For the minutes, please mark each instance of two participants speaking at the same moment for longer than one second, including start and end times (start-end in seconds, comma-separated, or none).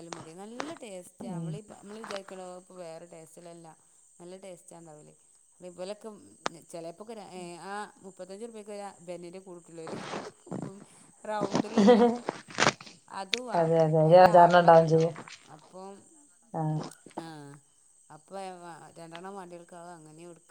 13.6-15.1